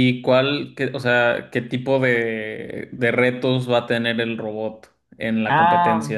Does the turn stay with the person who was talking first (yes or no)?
no